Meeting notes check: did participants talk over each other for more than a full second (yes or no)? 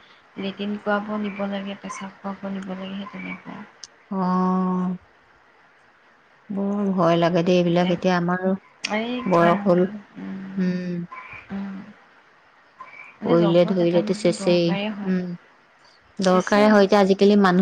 yes